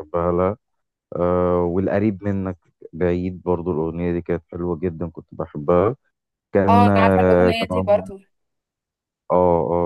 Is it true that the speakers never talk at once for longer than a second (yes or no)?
no